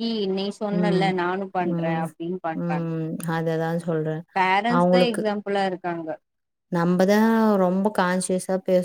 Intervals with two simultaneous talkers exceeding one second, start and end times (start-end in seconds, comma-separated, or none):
none